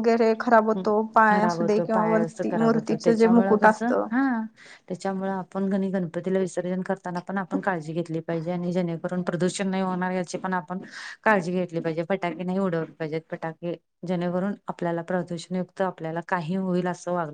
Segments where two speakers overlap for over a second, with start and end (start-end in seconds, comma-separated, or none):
1.3-4.1